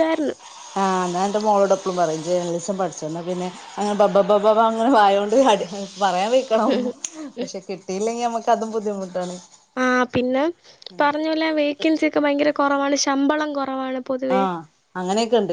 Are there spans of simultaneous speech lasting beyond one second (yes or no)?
no